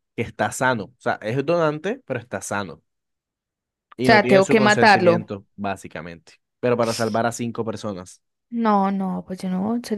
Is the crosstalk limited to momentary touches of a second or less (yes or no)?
no